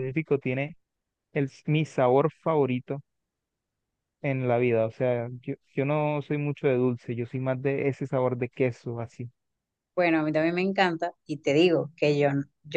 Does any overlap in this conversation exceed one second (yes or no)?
no